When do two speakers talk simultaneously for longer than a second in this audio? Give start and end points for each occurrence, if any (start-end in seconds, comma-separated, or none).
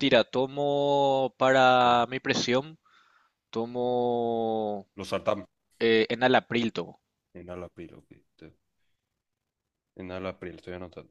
none